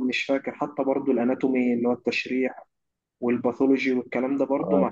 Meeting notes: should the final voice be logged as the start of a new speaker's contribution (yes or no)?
no